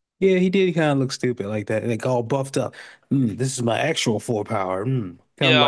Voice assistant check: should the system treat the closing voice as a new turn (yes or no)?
yes